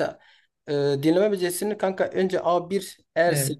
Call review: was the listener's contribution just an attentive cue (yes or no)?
yes